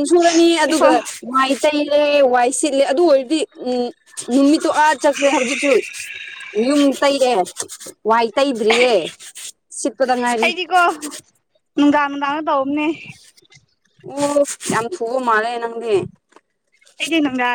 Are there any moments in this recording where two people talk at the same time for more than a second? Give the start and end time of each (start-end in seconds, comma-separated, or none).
none